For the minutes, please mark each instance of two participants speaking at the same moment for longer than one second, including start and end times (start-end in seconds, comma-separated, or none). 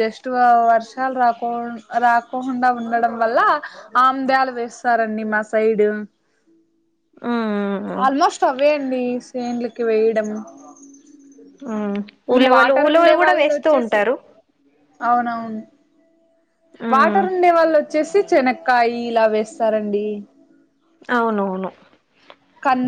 12.3-14.0